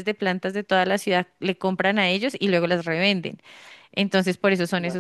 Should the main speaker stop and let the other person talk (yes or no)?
no